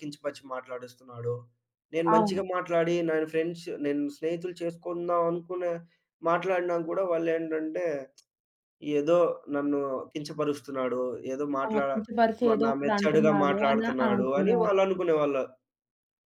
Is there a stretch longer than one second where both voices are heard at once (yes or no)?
yes